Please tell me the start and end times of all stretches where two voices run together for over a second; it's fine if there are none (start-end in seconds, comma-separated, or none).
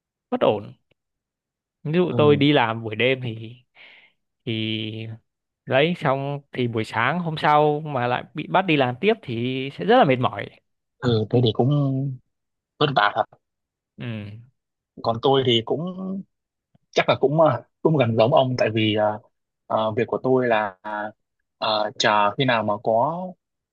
none